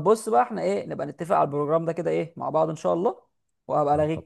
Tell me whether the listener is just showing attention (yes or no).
yes